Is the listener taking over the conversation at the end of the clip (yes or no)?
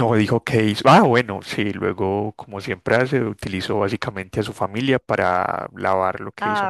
no